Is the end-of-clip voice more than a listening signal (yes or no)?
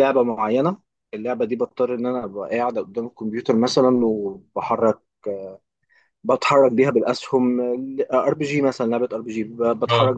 no